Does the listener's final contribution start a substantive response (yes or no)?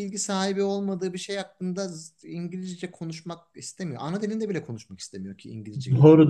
yes